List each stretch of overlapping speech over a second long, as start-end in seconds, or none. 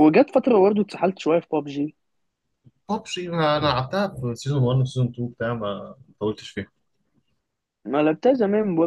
none